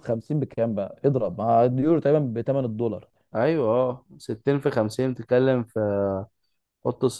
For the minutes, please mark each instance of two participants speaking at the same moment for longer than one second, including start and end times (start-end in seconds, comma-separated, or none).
none